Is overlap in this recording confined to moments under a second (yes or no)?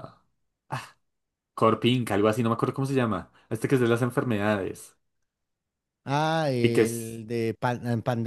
yes